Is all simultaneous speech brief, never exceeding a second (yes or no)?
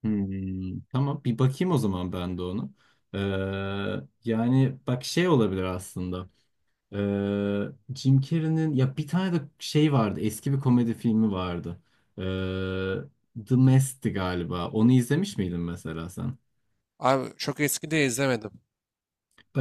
yes